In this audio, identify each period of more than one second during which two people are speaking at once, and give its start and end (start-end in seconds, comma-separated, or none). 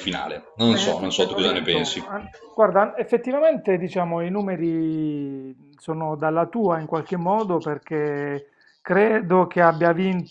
0.6-2.0